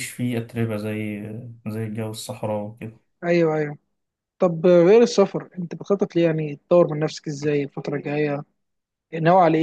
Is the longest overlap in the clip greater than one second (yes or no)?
no